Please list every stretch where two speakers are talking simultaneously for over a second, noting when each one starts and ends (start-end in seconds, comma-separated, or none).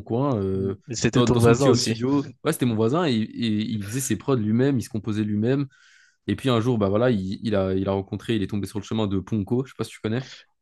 0.5-2.1